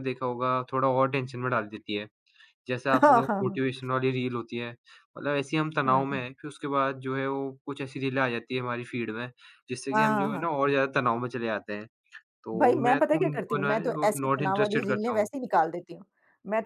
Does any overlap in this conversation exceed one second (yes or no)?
yes